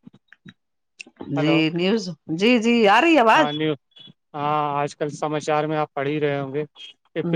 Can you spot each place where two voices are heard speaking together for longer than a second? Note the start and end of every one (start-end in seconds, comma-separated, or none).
none